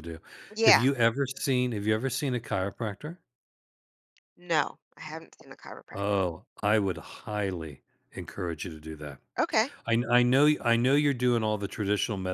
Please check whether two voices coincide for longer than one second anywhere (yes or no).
no